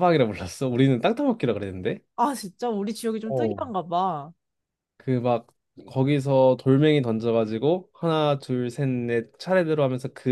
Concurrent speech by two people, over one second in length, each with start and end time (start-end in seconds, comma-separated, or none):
none